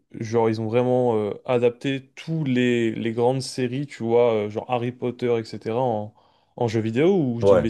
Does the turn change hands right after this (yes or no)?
yes